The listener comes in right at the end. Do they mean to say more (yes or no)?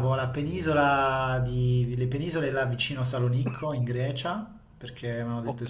no